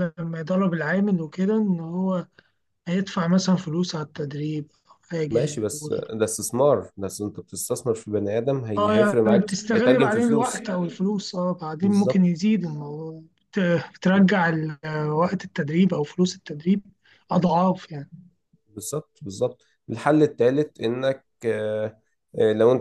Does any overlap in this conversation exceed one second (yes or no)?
yes